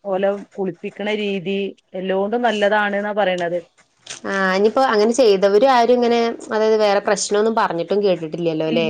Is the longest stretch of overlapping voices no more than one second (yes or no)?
yes